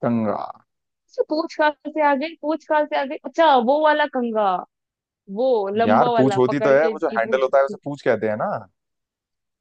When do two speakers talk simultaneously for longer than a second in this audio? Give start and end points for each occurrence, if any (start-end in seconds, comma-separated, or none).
5.9-7.5